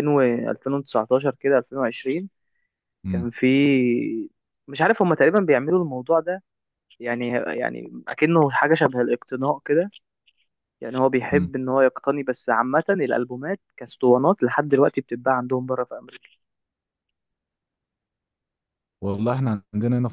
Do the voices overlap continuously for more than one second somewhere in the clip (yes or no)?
no